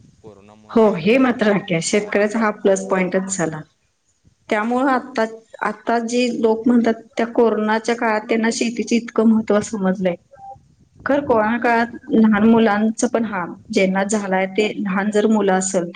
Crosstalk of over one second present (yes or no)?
yes